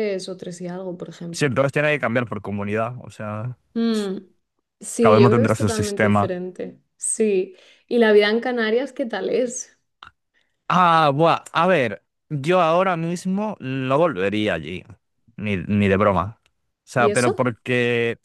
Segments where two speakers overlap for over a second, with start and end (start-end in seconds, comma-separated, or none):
5.0-6.3